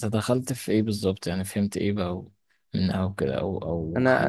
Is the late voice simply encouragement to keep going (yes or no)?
no